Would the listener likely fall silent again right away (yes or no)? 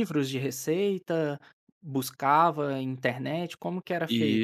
no